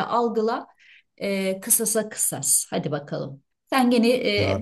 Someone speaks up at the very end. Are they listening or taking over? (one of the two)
listening